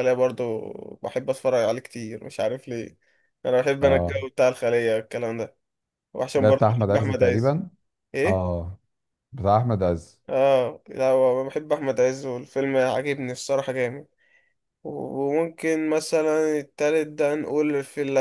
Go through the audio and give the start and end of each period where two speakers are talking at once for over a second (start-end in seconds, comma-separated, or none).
6.3-7.6